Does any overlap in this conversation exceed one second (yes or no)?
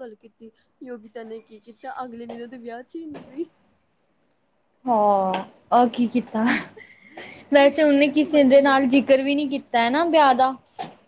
no